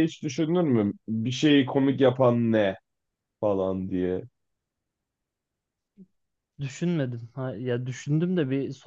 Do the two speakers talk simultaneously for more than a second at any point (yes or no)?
no